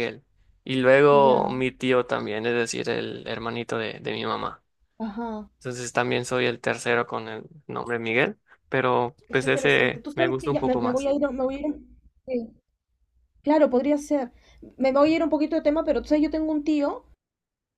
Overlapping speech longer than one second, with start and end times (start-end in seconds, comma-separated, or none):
9.3-11.1